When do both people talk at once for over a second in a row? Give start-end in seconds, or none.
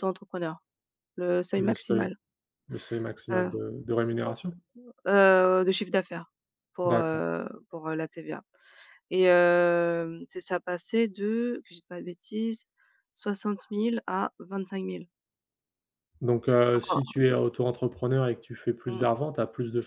none